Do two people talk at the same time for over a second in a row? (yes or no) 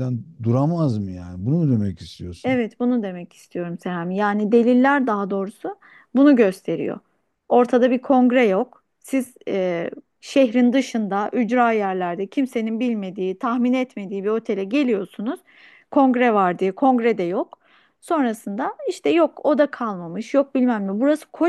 no